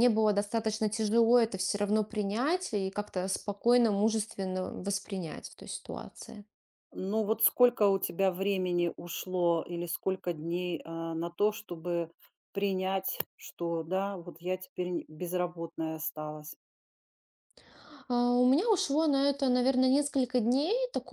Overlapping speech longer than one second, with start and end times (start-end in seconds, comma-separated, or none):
none